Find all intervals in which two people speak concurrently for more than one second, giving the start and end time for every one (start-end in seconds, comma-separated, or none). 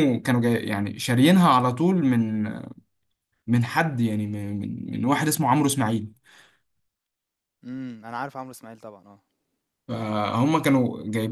none